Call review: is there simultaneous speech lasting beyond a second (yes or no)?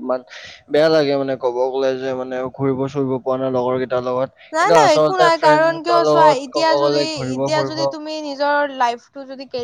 yes